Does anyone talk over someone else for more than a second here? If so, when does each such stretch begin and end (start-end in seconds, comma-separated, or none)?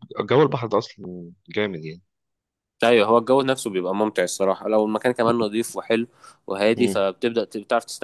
none